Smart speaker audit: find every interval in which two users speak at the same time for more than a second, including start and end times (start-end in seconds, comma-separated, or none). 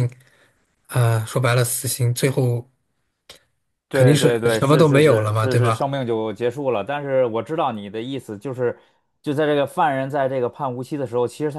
3.9-5.8